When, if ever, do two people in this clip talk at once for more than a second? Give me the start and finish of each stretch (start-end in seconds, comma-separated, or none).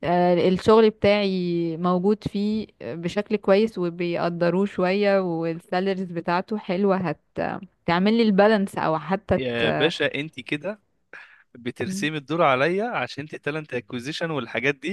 none